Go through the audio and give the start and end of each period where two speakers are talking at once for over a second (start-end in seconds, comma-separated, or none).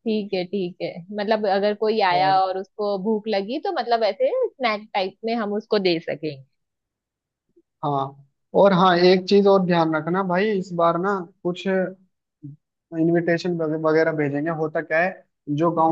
none